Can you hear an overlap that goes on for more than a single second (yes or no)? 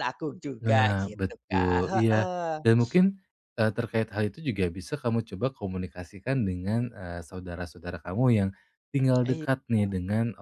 yes